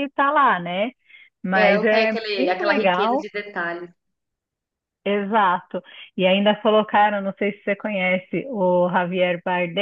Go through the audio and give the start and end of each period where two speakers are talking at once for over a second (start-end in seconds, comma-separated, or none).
1.5-3.3